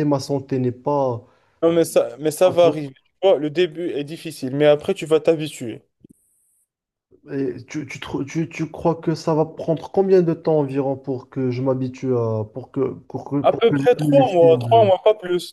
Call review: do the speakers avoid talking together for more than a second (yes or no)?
no